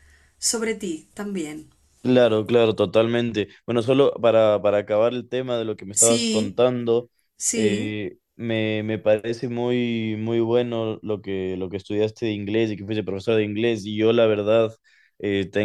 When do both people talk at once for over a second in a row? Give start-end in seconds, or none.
none